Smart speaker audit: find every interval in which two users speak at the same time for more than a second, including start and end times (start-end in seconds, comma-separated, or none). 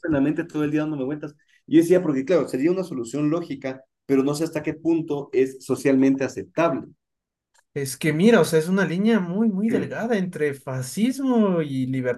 none